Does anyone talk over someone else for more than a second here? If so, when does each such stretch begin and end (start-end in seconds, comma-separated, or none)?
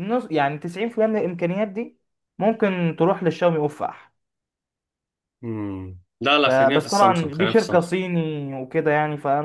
6.4-7.9